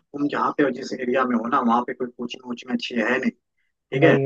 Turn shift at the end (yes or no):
no